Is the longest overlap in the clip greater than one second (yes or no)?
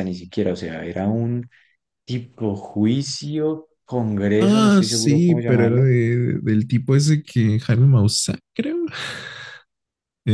yes